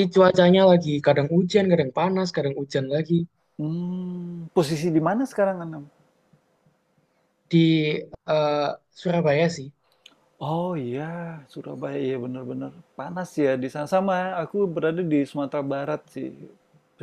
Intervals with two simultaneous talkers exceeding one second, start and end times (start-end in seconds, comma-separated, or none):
none